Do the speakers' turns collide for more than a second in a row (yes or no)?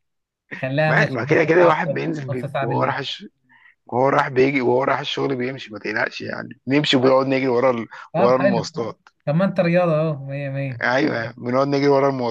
yes